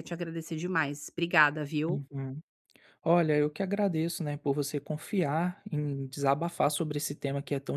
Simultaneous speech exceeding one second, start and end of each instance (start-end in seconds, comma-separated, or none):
none